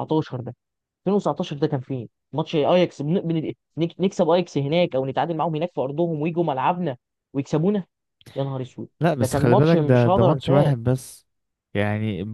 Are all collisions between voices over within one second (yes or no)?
no